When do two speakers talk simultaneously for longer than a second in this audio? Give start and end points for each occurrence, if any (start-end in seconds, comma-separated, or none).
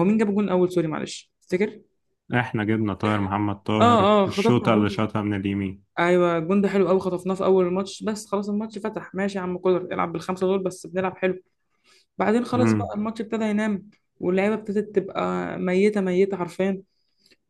3.8-5.0